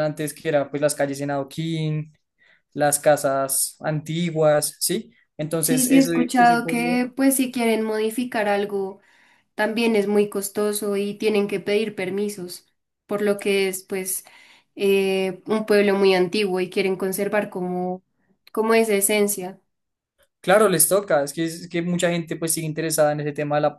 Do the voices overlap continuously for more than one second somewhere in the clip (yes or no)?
yes